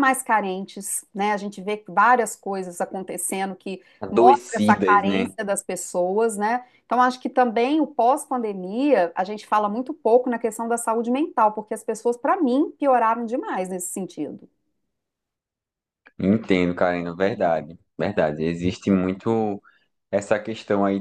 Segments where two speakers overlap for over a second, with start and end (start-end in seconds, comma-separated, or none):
4.0-5.3